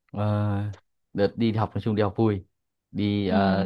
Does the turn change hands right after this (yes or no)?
no